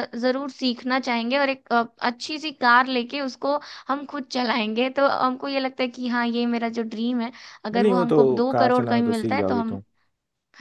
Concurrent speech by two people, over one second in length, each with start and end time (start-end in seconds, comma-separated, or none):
7.7-9.8